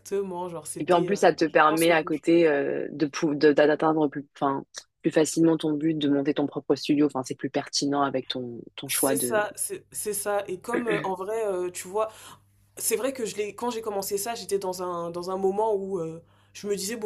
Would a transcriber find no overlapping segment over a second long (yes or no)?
no